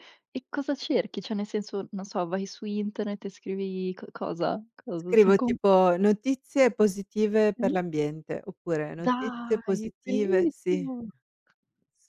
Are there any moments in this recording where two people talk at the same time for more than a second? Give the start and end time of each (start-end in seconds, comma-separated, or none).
9.0-10.9